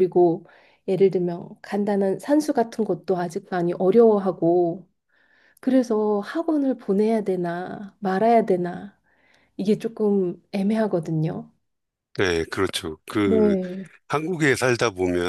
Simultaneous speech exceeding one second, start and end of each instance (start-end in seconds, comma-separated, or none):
none